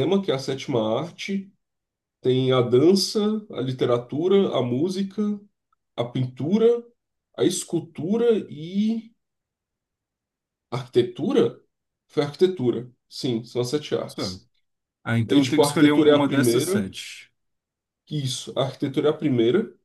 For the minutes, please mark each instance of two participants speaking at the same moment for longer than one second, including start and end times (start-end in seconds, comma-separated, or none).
15.3-16.9